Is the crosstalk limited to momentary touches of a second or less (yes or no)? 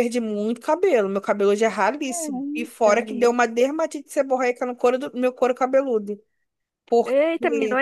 no